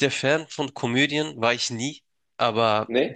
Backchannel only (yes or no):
yes